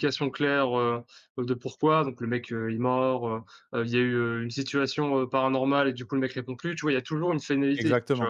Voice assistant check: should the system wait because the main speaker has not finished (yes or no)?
no